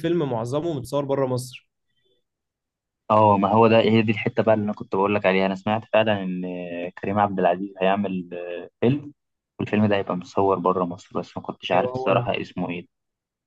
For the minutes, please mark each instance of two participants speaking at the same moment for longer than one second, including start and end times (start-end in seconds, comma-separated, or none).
none